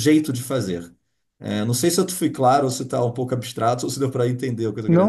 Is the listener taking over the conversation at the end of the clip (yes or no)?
yes